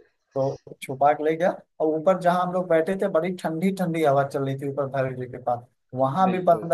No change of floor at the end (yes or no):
yes